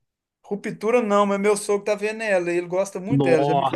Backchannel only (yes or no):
no